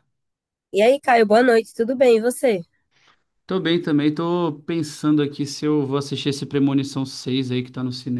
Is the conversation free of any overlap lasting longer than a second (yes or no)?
yes